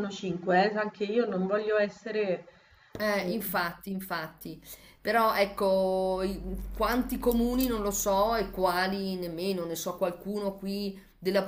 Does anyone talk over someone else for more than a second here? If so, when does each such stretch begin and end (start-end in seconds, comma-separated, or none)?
none